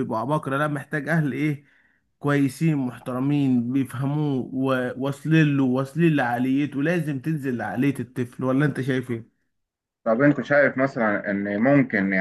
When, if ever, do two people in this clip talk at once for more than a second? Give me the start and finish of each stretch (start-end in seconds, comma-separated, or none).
none